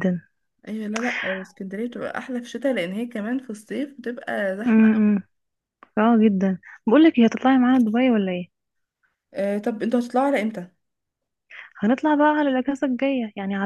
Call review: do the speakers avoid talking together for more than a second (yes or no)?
yes